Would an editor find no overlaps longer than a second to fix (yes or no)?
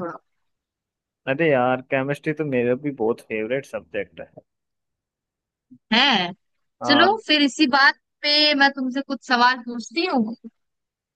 yes